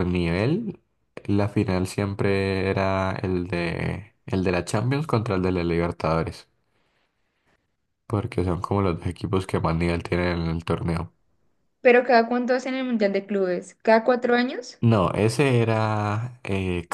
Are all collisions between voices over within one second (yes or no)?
yes